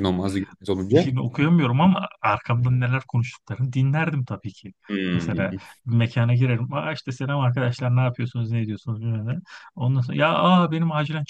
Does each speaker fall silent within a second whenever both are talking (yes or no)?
yes